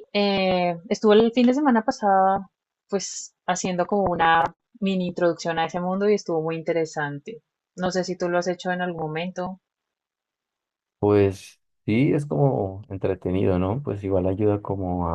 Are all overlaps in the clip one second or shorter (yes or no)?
yes